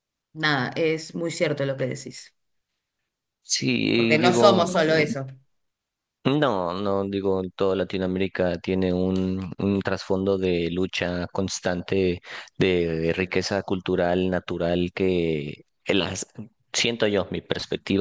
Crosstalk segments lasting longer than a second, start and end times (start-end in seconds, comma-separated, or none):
3.9-5.1